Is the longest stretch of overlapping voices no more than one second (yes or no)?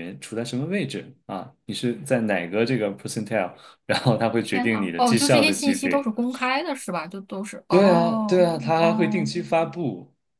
no